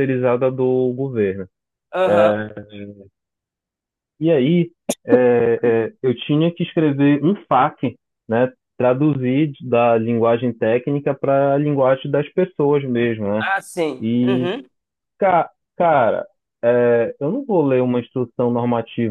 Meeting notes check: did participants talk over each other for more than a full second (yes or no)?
no